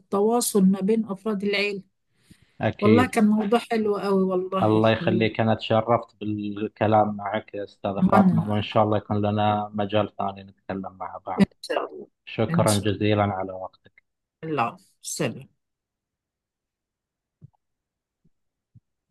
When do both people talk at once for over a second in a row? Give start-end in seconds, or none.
none